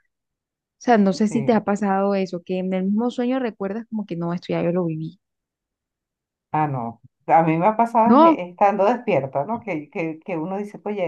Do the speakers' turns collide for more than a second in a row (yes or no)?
no